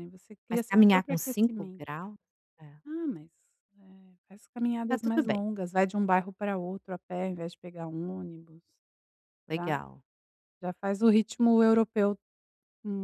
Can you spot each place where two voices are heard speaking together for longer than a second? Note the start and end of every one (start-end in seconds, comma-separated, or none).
0.5-1.8